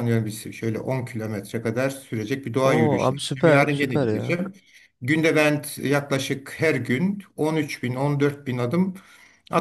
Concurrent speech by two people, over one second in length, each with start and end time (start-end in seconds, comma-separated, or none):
2.6-4.4